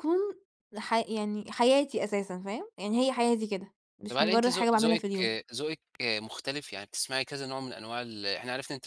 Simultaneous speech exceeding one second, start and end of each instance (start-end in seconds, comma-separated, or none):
4.1-5.3